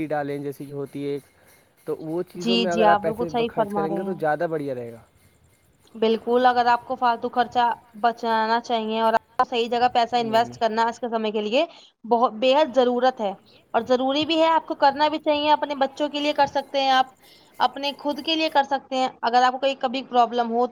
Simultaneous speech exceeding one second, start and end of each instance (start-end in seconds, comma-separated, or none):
2.4-4.4